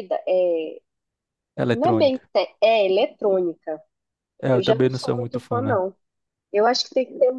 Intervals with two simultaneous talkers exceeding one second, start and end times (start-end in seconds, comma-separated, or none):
4.5-5.8